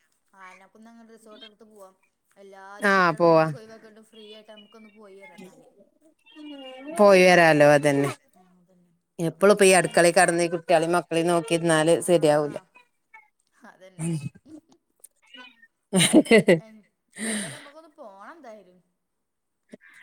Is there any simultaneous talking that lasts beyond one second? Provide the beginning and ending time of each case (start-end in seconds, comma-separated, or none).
none